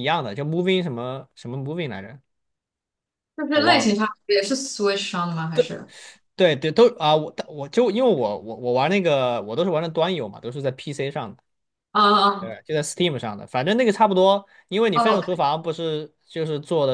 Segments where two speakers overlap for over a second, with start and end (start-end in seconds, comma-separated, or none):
none